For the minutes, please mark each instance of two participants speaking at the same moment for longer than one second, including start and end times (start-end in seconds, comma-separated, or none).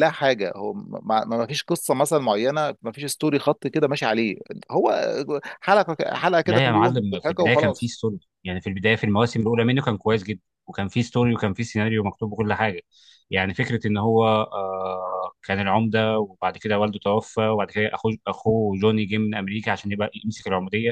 6.5-7.9